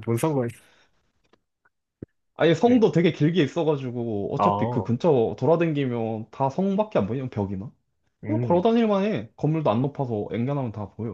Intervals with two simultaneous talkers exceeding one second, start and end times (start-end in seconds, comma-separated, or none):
none